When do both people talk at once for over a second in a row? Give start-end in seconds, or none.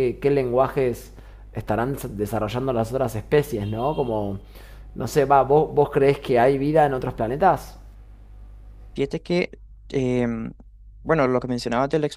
none